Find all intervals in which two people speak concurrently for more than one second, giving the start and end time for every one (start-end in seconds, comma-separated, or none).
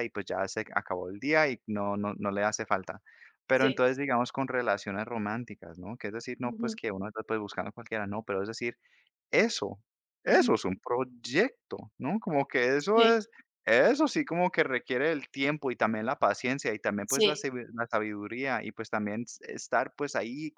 none